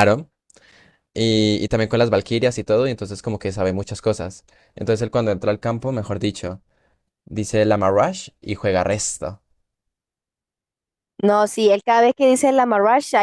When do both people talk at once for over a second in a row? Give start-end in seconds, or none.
none